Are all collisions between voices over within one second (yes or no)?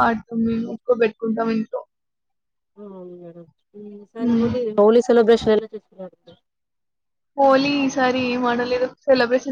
yes